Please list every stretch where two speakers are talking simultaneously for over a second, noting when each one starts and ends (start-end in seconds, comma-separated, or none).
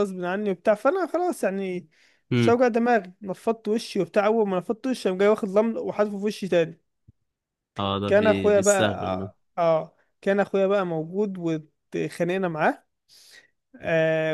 8.1-9.3